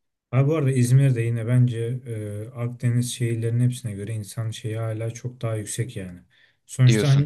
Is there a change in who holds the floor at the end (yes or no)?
no